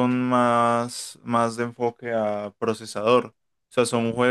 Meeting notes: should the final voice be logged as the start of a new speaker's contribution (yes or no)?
no